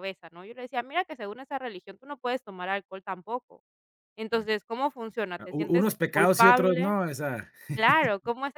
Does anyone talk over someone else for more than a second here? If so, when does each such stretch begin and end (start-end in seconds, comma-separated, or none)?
5.4-6.9